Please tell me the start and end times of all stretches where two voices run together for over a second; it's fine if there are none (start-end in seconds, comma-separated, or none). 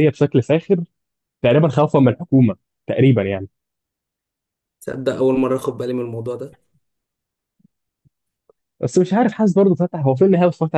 none